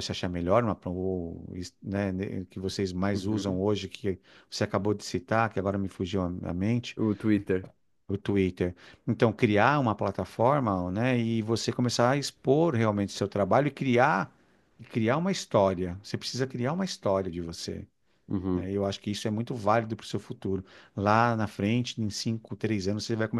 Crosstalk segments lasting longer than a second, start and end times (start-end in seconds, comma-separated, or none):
none